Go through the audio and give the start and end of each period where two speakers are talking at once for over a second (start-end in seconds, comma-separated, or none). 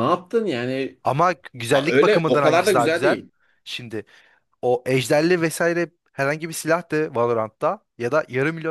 1.7-3.2